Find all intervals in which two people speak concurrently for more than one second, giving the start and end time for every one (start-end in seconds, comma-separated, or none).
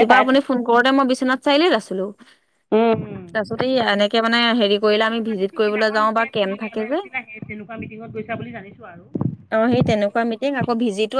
5.1-7.0